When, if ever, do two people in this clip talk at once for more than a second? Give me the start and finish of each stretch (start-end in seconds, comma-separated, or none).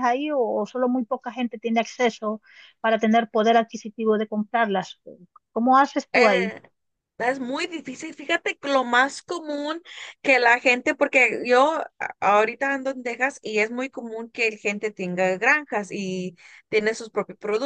none